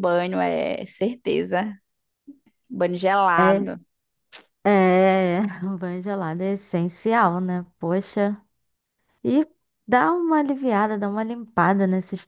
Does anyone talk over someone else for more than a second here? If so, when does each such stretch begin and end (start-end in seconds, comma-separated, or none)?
none